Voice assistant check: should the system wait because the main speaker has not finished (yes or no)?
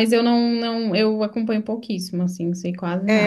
no